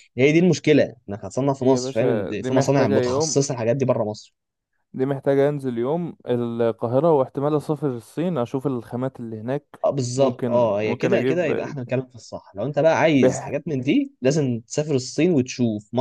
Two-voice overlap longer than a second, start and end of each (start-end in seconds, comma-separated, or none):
1.6-3.4, 10.2-11.5